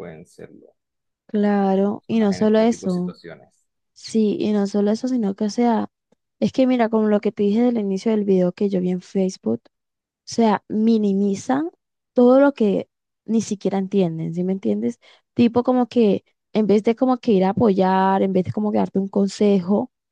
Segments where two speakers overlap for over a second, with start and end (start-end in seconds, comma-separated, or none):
2.0-3.2